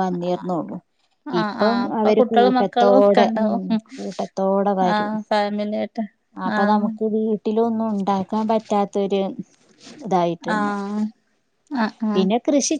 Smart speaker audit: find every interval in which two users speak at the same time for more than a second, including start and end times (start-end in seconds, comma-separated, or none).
1.4-3.5